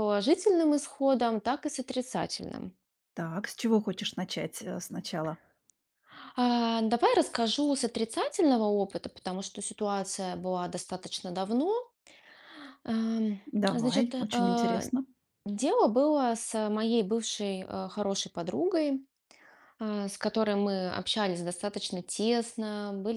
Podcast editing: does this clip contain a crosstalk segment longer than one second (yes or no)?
yes